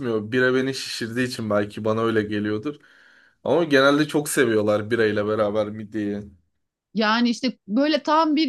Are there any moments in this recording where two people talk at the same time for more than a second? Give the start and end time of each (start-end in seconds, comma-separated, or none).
none